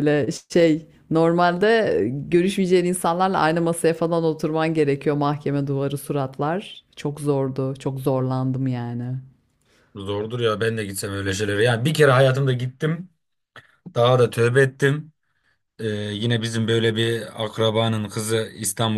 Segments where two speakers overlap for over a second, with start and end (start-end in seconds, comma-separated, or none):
none